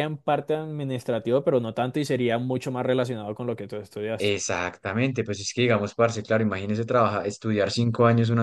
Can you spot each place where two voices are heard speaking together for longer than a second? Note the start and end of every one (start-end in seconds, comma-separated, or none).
none